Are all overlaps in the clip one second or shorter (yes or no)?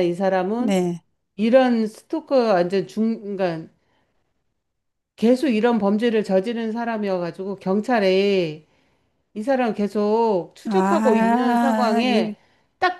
no